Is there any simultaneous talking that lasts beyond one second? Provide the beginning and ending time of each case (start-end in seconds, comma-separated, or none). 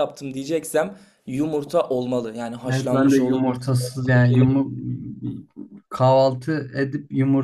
2.7-4.6